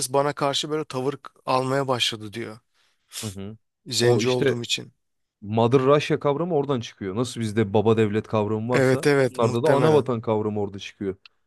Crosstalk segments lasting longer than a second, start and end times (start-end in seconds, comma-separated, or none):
8.7-10.1